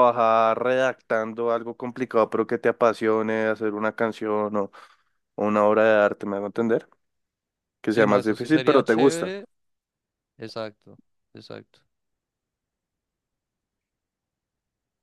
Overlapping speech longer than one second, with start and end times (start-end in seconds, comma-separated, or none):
7.9-9.3